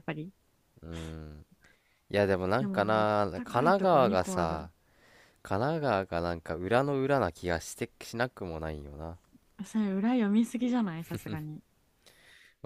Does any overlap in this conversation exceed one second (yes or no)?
yes